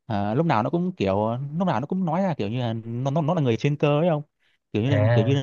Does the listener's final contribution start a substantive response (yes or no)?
no